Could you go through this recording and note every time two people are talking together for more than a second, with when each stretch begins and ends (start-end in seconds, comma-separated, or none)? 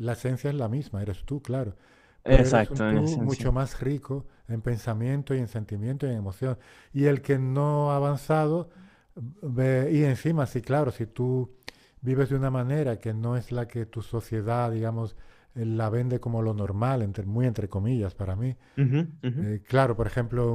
2.2-3.5